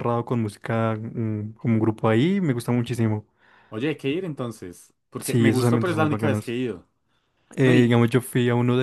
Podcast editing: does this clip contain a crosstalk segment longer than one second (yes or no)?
yes